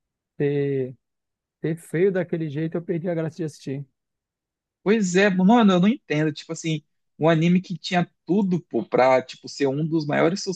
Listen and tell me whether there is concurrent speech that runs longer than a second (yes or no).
no